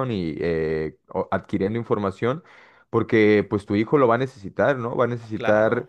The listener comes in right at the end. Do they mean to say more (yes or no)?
no